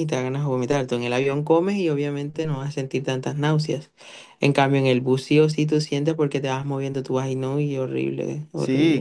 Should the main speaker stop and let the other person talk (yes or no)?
yes